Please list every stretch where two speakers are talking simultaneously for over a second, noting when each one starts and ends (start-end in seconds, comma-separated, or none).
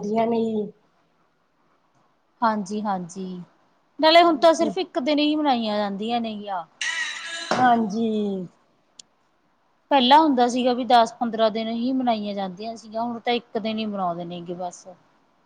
none